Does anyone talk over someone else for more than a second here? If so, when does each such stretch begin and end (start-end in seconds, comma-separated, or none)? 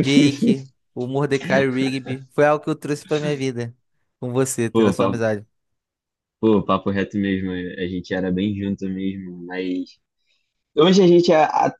none